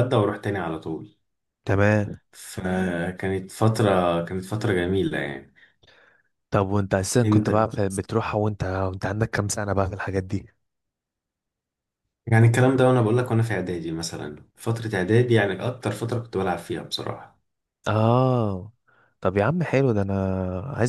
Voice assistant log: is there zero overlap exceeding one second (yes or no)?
yes